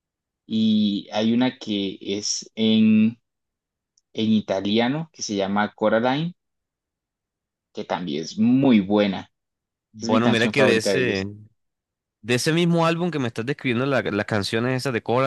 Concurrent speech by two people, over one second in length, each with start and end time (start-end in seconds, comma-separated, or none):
10.0-11.2